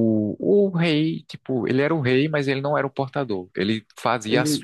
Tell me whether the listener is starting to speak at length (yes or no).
no